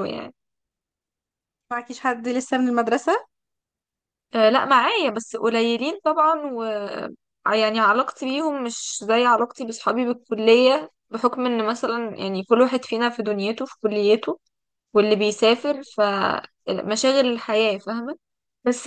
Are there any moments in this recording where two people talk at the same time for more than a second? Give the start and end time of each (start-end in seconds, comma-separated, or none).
none